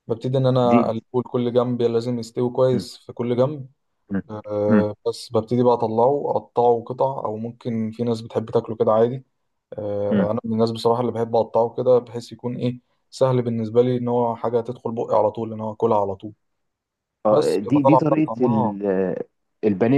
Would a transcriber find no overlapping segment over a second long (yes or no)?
no